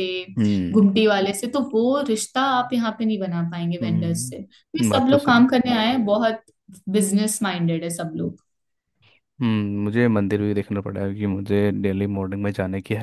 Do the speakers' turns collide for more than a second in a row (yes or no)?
yes